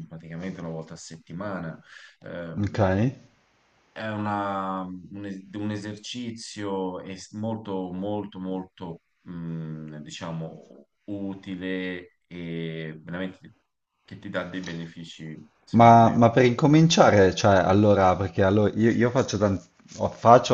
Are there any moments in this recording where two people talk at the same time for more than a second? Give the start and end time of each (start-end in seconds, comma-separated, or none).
none